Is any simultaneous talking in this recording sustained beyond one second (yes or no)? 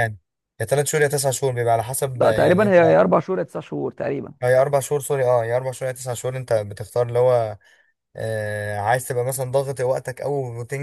no